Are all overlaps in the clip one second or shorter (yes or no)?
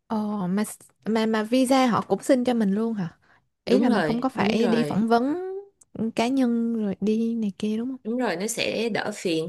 no